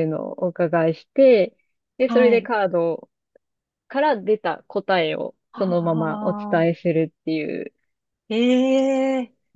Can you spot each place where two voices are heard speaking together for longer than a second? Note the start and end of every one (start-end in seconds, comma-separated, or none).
5.5-6.8